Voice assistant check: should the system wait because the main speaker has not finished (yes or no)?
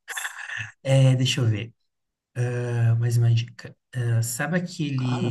yes